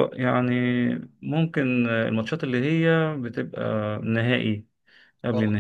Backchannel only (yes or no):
yes